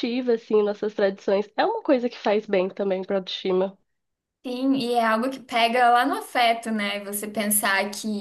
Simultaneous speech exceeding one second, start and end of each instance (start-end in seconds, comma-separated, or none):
none